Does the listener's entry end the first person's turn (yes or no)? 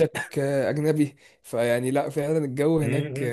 yes